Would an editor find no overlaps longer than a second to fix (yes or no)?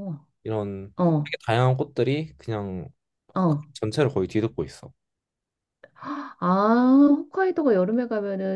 yes